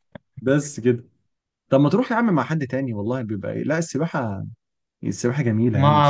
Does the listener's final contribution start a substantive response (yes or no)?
yes